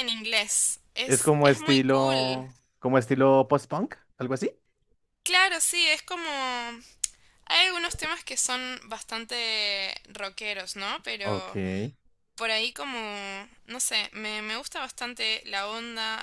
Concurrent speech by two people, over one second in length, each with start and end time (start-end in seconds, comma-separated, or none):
1.1-2.5